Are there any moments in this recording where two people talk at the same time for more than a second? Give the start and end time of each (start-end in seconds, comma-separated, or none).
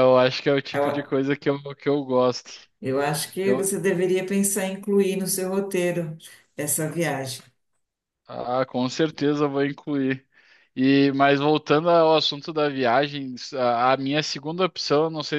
none